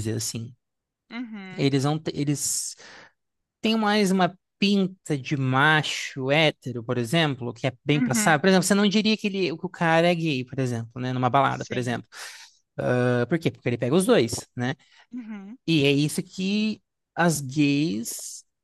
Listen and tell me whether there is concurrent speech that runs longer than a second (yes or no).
no